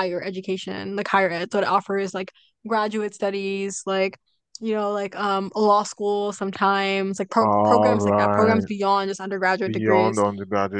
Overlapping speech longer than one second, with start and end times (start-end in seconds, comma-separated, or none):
7.4-8.7